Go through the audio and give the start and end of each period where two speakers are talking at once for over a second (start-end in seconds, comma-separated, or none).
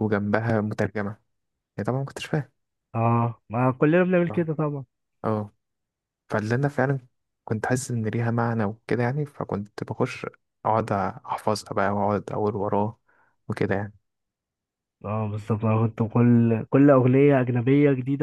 none